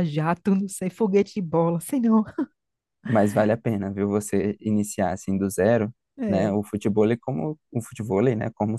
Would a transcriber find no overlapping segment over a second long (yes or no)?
yes